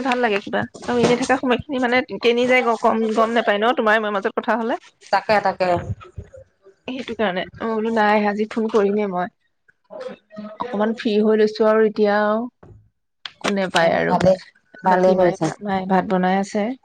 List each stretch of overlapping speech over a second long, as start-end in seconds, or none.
none